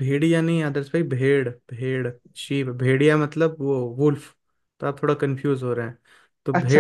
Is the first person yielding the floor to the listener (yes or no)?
yes